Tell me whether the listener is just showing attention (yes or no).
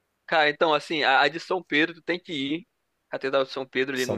yes